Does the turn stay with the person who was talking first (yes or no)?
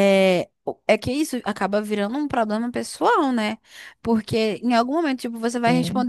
yes